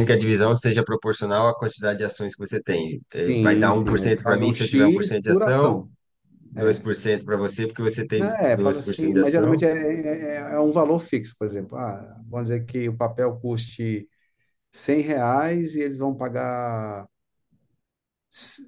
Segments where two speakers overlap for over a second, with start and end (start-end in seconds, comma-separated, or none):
3.1-5.8, 8.2-9.7